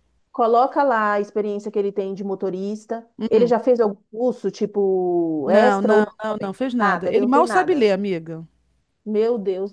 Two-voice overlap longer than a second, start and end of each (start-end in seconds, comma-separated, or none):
5.4-7.9